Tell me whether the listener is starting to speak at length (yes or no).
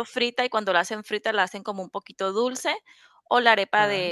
no